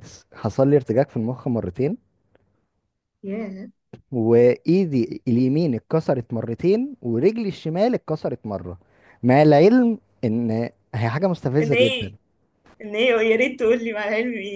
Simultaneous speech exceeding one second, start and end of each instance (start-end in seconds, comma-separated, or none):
none